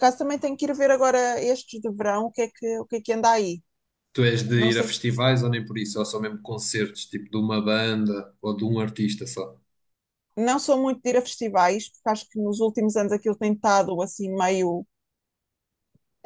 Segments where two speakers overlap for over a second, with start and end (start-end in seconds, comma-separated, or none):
none